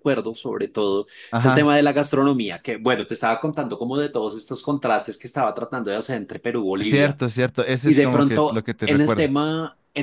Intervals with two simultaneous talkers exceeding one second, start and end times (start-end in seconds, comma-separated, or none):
7.8-9.4